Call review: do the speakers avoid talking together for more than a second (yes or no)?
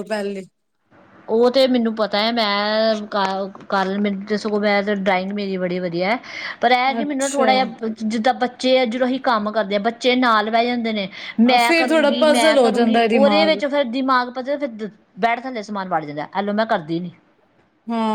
no